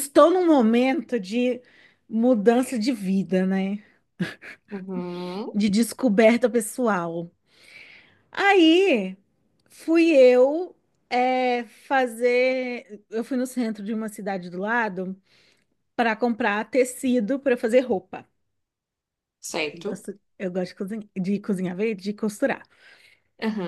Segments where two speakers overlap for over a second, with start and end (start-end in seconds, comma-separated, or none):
none